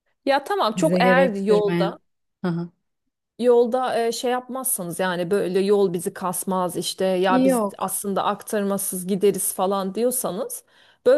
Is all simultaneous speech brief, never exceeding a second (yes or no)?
no